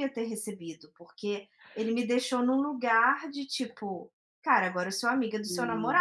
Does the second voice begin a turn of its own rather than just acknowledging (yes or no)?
no